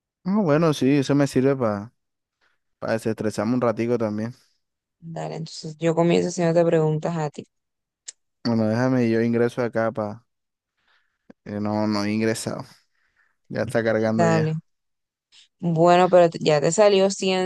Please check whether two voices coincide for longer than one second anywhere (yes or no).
no